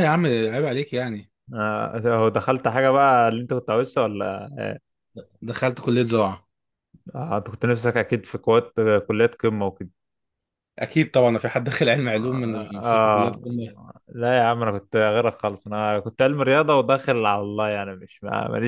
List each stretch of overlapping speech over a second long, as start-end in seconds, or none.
12.2-13.4